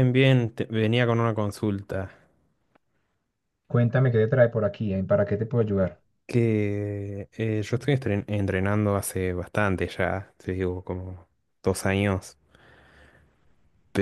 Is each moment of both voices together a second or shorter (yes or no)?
yes